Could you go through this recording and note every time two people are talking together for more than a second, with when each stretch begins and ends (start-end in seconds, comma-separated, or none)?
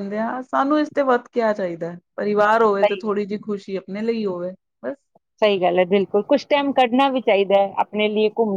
none